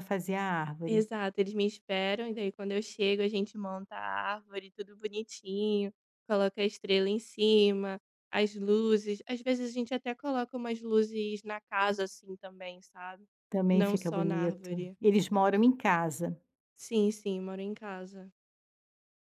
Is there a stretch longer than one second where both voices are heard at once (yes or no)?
yes